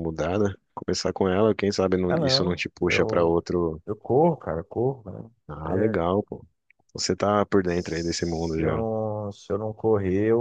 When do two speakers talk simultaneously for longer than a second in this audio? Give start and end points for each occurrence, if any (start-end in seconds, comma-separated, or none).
2.1-3.4, 7.6-8.8